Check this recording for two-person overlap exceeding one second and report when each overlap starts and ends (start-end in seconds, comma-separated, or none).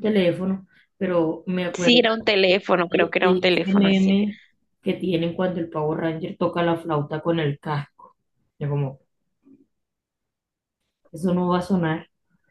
2.9-4.2